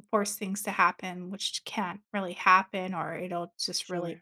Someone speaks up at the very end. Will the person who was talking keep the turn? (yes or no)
yes